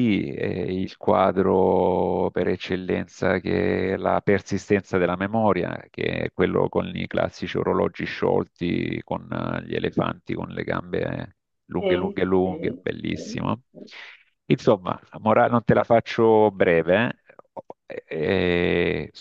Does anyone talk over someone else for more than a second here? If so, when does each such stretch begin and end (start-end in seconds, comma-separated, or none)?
11.8-13.6